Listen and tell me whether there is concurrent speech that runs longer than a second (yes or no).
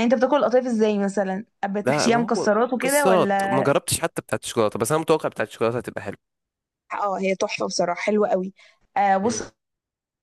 yes